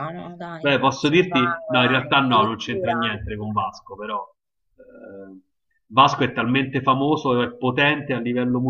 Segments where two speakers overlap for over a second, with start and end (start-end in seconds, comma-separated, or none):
0.6-3.0